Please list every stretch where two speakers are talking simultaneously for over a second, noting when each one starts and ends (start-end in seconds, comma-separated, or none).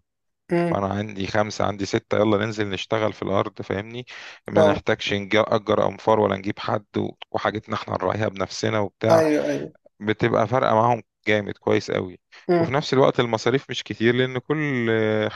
none